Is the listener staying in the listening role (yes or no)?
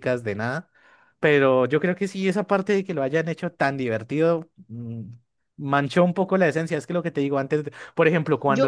no